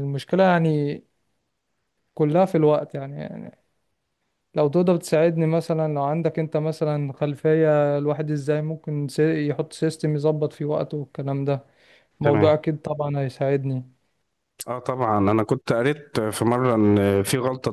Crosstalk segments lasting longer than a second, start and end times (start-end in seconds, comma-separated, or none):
none